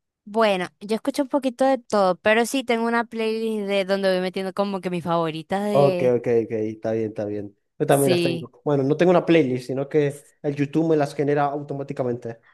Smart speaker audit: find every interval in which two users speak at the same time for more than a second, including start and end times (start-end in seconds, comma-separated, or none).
none